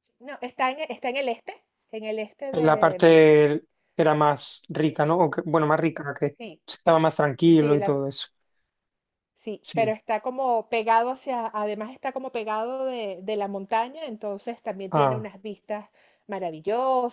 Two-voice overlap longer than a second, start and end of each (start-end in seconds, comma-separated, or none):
none